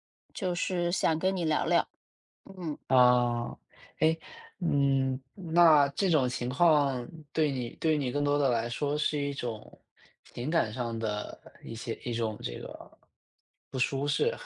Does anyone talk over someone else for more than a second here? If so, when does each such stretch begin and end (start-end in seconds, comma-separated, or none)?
none